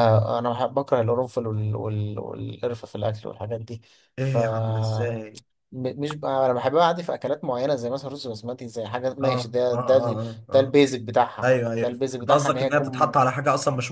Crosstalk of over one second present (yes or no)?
yes